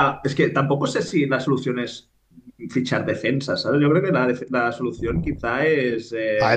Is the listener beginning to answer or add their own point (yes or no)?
yes